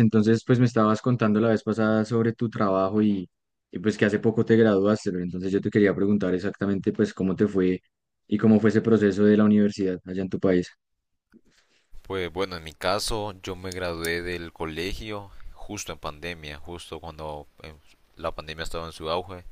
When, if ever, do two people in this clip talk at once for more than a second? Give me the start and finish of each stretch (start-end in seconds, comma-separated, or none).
none